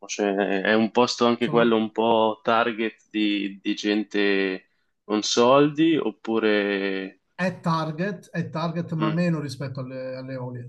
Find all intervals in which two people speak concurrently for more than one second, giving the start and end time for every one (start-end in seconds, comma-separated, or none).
none